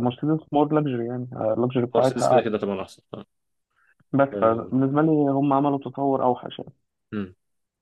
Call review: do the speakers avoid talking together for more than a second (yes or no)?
yes